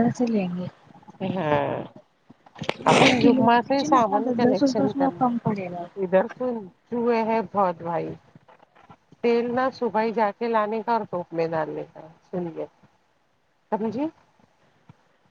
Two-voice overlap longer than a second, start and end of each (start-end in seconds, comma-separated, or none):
2.9-5.1